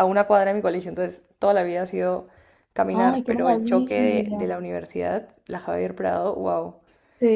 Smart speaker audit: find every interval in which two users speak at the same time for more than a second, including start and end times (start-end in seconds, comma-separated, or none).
2.9-4.5